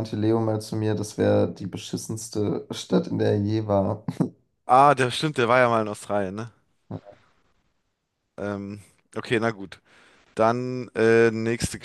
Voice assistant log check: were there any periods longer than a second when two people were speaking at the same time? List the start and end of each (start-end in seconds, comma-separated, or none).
none